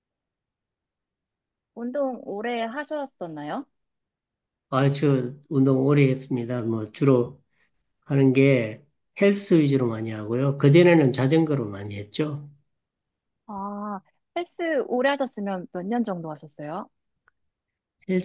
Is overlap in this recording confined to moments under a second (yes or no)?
yes